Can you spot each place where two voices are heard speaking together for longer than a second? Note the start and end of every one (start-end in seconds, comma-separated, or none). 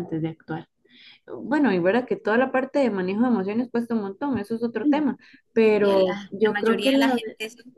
5.7-7.2